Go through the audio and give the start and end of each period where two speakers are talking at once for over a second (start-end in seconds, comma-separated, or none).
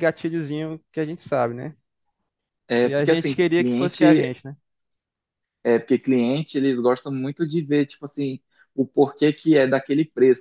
2.8-4.4